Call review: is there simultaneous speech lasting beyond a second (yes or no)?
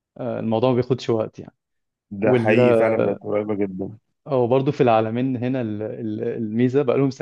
no